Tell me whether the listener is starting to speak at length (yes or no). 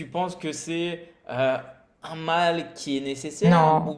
no